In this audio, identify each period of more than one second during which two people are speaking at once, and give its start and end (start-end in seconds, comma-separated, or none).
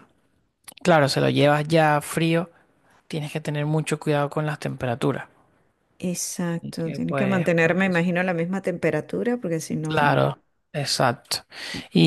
6.6-8.0